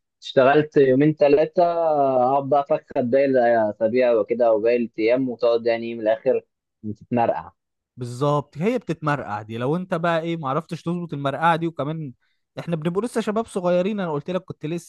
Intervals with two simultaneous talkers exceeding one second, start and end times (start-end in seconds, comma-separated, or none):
none